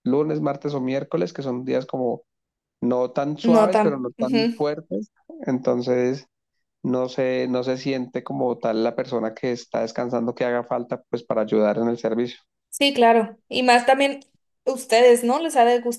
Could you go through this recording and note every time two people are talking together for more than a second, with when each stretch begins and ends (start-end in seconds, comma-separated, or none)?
3.4-4.7